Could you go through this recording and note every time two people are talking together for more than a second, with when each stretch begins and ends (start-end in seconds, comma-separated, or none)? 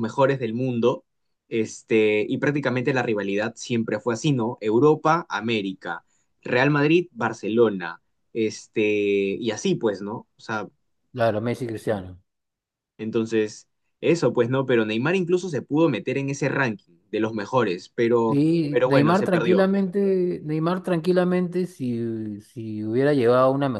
18.3-19.7